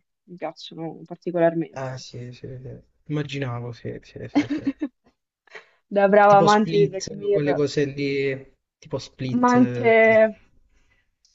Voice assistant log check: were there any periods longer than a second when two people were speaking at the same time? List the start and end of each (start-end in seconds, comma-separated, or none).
6.3-7.6